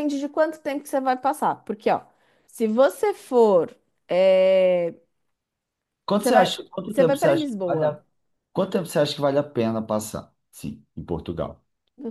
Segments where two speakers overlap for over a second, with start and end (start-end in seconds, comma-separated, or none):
6.1-8.0